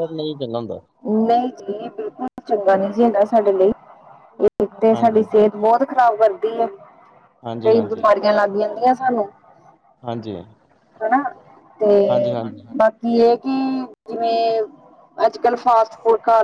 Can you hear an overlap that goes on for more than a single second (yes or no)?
no